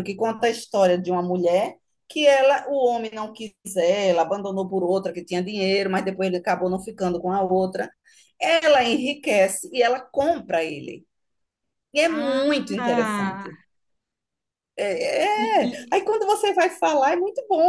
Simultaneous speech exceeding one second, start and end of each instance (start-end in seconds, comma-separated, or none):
12.1-13.5